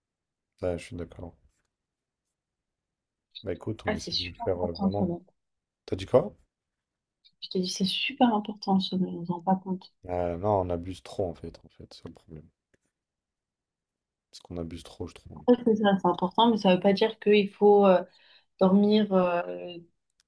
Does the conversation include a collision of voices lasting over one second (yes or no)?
yes